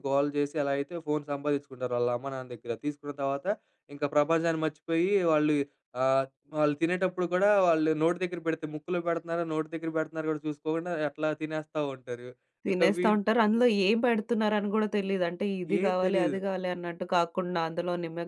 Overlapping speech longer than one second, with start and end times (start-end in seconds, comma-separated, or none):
none